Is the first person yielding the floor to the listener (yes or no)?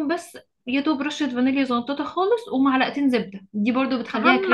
yes